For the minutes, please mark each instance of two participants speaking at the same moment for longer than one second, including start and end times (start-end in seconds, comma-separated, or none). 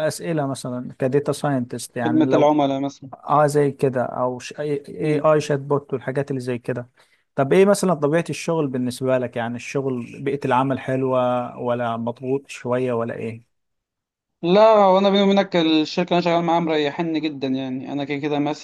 none